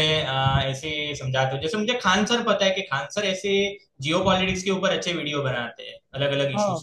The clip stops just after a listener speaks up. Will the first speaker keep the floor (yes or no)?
no